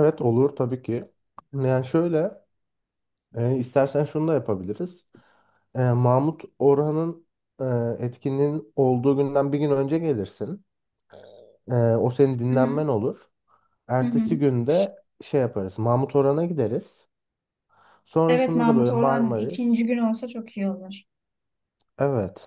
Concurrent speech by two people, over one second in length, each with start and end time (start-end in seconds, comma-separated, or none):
18.3-19.8